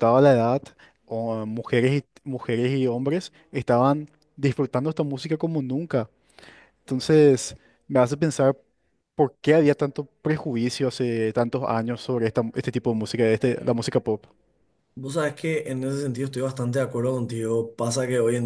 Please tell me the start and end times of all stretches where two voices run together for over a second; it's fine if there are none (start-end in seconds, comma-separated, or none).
none